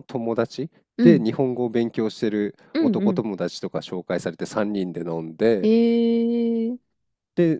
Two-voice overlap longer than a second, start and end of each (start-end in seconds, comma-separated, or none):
none